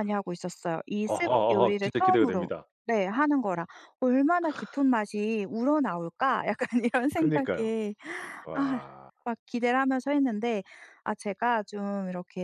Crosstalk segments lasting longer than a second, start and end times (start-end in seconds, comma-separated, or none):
1.0-2.5